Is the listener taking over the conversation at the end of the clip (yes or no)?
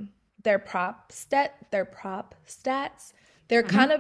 no